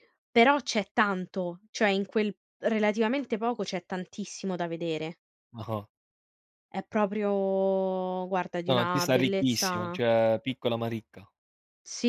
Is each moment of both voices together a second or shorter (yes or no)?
no